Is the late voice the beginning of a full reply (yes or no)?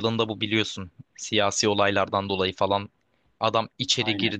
no